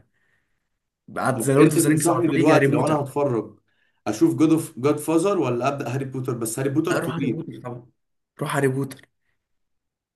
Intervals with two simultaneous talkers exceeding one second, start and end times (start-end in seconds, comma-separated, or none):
1.3-3.0